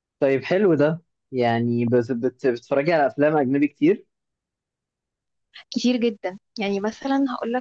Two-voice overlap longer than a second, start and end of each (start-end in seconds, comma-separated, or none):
none